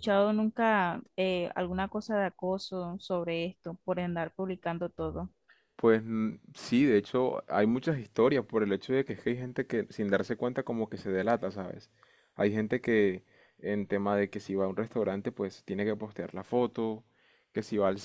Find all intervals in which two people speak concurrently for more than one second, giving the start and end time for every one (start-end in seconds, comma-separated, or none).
none